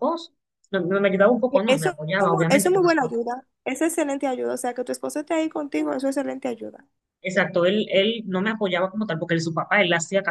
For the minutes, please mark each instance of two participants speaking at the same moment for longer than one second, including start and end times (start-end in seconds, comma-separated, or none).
1.5-3.2